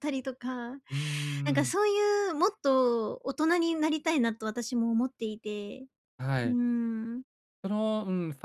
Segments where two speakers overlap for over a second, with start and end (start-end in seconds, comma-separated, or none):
none